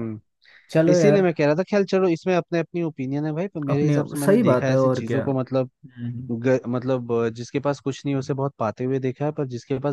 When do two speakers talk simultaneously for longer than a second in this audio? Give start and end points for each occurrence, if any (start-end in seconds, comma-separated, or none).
3.7-5.7